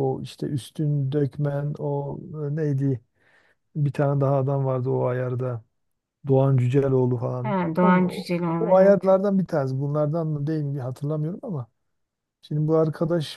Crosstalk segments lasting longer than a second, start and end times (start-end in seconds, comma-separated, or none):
7.4-9.0